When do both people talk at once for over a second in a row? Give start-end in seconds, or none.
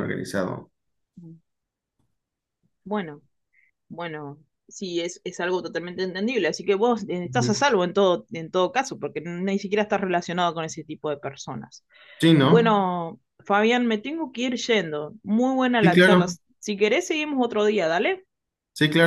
none